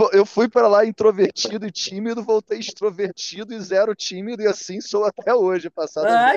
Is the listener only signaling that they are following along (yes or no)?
no